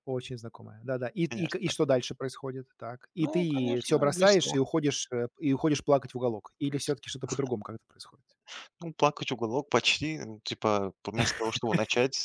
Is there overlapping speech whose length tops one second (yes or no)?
yes